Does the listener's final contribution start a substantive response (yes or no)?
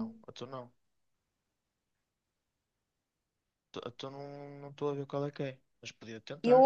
yes